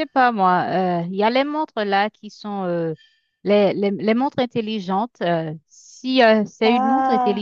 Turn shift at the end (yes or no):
no